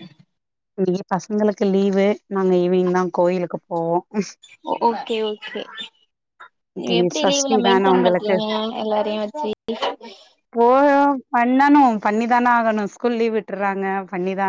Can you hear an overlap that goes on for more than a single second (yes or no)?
yes